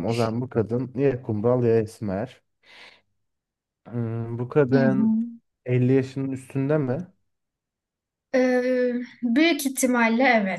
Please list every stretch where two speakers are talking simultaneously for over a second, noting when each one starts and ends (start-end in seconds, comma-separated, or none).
none